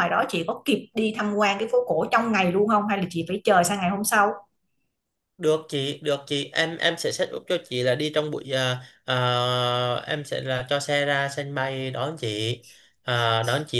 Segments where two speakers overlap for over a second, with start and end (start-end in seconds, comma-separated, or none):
none